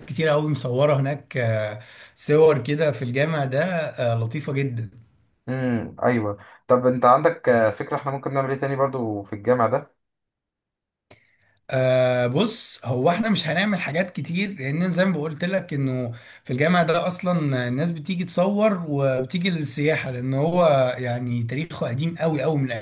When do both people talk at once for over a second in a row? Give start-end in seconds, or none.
none